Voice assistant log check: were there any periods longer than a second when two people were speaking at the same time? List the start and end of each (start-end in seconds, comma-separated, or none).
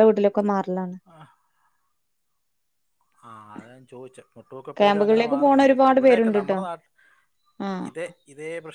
4.8-6.6